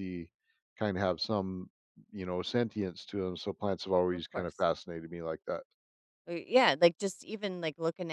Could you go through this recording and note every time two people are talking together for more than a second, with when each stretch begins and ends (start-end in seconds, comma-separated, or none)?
none